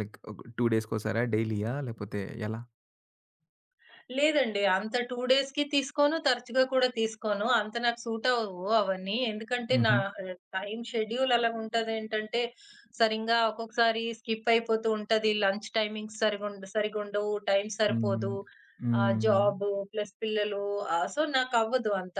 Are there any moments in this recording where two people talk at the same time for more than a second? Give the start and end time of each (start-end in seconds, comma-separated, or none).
none